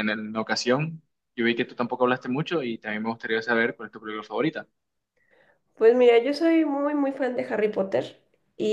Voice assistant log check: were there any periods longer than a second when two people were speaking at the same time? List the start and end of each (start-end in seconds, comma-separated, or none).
none